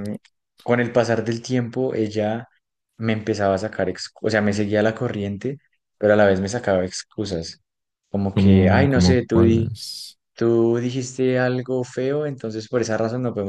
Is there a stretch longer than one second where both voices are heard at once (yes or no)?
yes